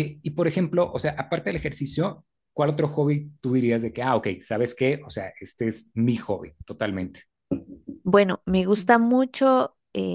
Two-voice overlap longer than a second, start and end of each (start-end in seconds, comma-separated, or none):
none